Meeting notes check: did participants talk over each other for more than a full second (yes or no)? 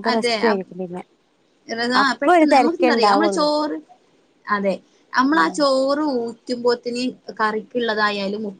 yes